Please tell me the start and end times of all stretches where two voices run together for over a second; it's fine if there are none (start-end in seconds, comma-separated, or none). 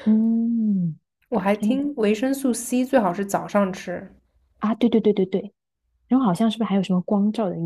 none